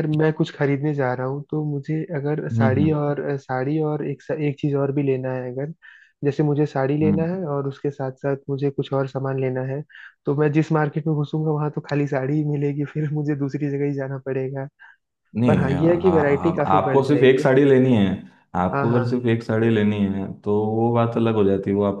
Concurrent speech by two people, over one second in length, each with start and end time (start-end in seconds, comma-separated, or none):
15.5-17.5